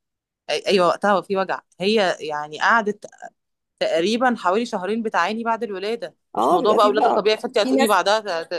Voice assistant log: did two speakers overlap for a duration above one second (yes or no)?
yes